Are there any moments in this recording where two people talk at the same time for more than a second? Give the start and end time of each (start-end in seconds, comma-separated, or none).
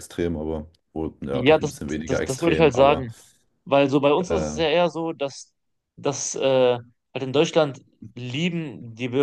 1.3-3.1